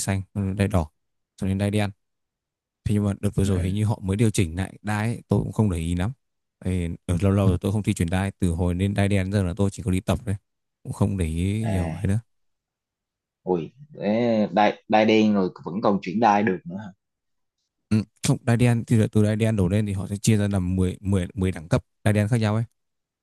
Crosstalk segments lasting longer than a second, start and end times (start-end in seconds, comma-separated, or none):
none